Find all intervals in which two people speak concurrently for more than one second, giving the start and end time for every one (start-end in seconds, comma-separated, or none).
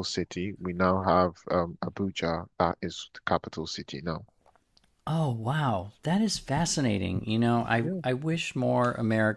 none